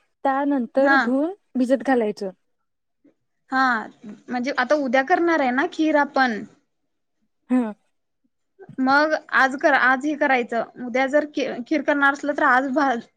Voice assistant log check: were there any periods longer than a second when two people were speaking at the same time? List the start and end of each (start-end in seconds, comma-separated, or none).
none